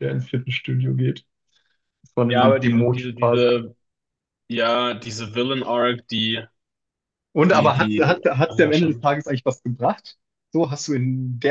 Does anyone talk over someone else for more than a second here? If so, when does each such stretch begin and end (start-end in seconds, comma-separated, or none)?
2.2-3.6, 7.5-9.1